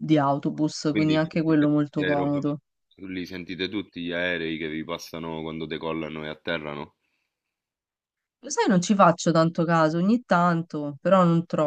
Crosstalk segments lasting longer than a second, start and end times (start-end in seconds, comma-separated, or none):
0.9-2.5